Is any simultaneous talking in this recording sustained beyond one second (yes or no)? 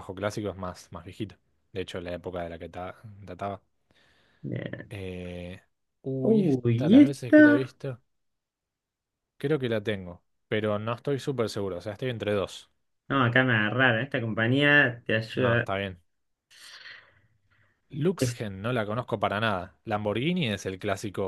yes